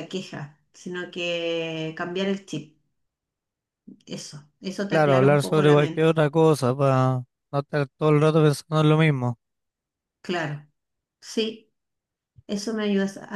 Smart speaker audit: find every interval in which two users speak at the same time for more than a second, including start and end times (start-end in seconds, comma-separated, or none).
4.9-6.1